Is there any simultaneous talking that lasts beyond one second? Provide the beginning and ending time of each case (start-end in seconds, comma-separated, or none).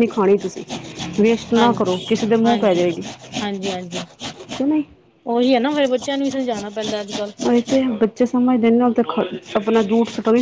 none